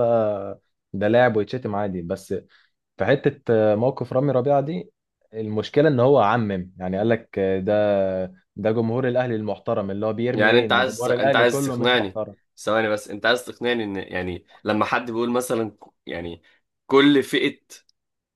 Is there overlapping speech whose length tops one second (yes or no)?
yes